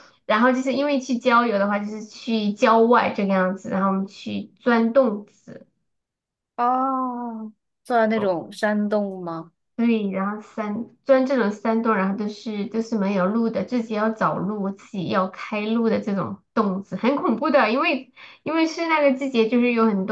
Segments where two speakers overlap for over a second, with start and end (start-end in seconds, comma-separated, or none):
none